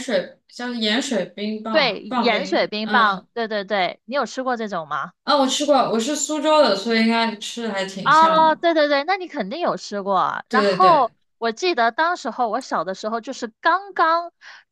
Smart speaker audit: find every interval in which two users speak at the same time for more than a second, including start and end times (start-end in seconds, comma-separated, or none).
1.7-3.3